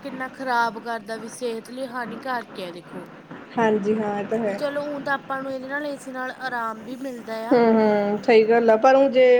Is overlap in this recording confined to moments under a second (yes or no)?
yes